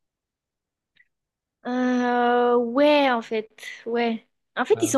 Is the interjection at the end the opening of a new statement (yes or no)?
no